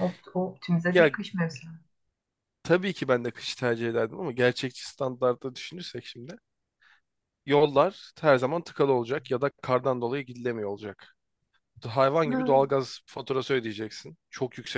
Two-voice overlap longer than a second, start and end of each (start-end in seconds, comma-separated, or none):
none